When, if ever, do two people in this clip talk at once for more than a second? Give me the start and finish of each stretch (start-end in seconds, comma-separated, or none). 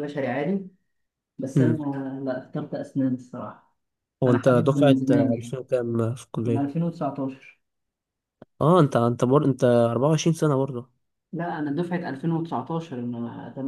4.2-5.5